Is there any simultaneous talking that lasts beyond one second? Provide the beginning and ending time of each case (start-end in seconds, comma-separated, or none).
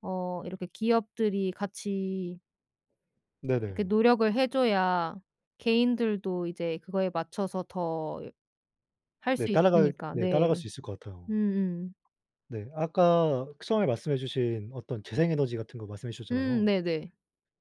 9.3-10.6